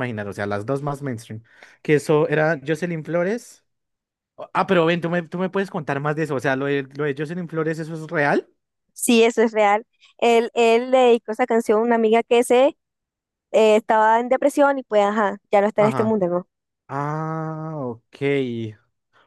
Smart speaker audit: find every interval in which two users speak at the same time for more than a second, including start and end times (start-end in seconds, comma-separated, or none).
none